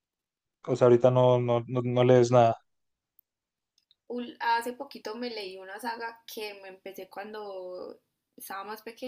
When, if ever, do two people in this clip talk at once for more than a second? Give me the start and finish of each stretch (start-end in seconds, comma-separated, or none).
none